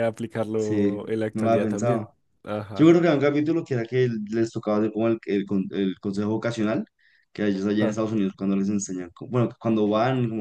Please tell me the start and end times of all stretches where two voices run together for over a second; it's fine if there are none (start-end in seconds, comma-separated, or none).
0.5-2.1